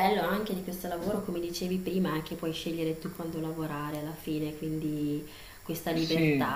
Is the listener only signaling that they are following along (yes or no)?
yes